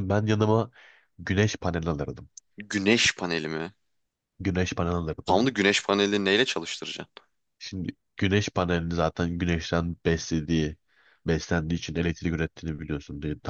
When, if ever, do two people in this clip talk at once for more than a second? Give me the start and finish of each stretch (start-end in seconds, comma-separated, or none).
none